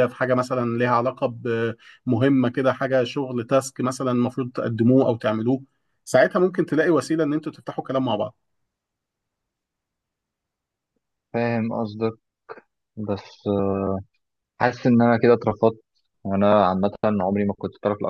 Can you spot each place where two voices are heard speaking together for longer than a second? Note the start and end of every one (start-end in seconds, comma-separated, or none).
none